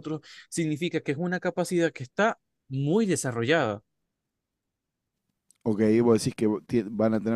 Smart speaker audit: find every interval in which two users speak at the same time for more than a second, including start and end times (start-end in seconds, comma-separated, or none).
none